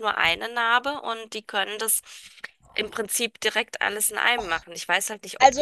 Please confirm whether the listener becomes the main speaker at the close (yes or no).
yes